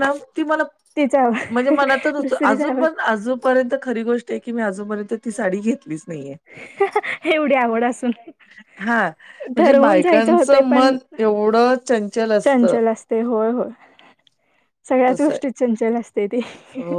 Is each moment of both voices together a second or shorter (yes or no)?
no